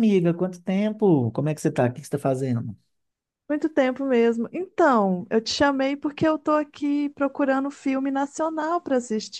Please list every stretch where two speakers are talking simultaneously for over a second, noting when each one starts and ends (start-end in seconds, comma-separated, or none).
none